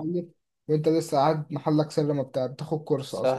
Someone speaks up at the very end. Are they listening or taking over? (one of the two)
taking over